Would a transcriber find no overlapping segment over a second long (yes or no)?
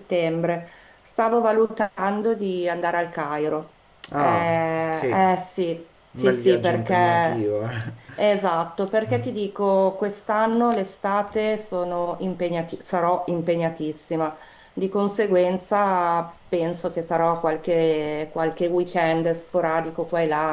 no